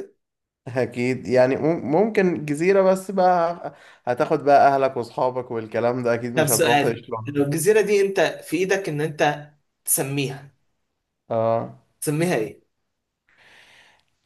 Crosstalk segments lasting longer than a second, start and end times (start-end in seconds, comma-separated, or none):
6.3-7.6